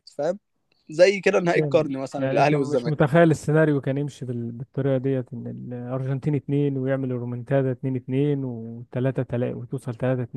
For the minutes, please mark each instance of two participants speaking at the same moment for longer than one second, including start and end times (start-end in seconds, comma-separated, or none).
1.6-3.0